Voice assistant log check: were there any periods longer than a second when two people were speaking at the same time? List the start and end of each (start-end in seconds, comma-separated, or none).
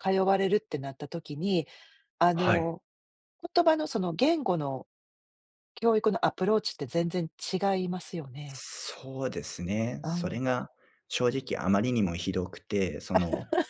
none